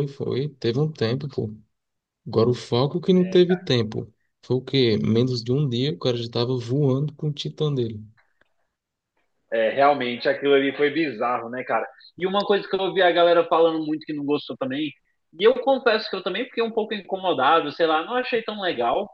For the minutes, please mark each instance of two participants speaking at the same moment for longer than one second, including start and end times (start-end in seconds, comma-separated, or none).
none